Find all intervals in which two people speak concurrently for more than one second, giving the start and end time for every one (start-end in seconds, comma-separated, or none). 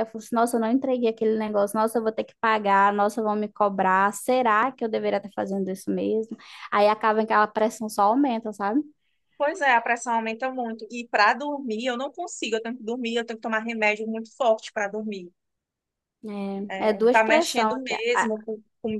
16.8-18.3